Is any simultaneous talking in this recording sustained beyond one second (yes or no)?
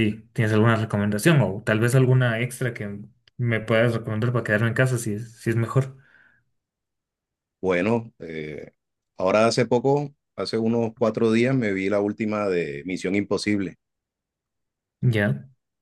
no